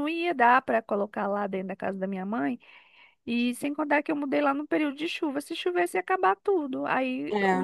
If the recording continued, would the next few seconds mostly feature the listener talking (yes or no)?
no